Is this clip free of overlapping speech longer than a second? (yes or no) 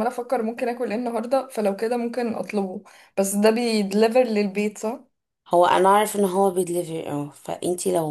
yes